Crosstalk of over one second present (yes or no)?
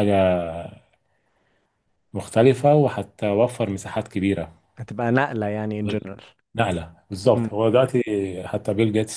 no